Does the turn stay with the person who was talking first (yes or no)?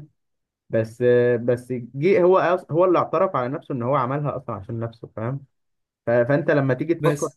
yes